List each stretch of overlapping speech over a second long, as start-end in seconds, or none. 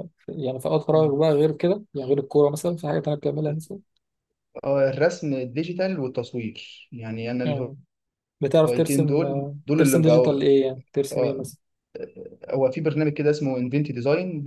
8.6-10.4